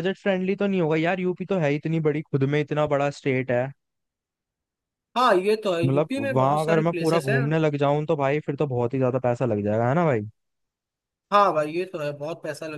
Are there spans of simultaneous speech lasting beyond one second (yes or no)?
yes